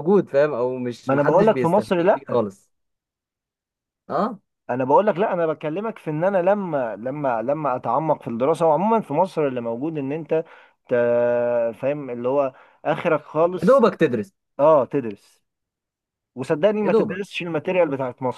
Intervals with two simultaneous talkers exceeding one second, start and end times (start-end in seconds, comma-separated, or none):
1.1-2.4